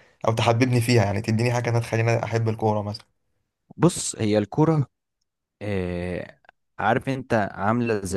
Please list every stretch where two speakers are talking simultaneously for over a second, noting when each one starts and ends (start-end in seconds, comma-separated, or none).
none